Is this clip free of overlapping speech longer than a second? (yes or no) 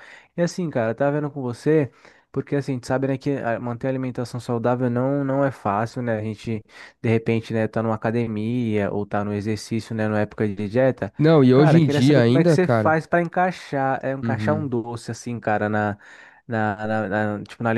no